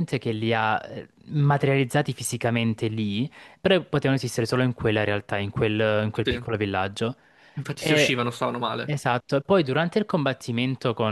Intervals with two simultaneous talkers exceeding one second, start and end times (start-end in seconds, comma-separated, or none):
none